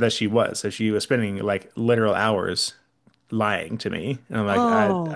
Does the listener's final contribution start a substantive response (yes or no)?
yes